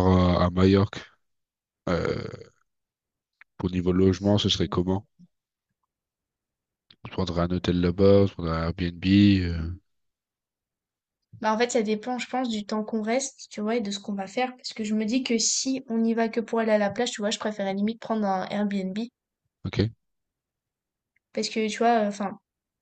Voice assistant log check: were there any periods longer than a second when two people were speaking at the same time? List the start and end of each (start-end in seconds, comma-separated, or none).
none